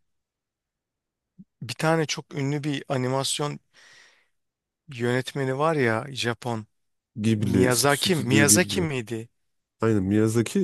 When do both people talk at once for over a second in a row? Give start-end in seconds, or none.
7.4-8.9